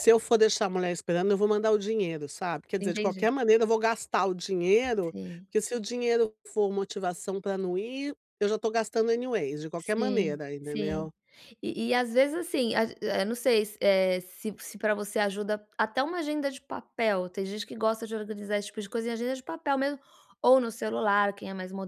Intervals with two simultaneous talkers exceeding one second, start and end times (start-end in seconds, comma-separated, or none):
9.8-11.1